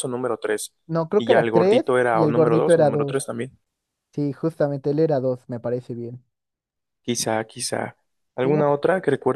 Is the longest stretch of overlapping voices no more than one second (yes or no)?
no